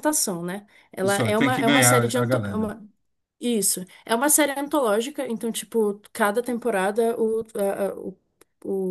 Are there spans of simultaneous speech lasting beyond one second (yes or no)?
yes